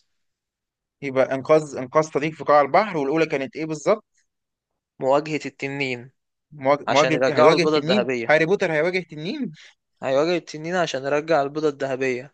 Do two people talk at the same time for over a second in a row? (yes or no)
yes